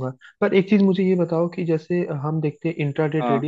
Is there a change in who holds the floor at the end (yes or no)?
no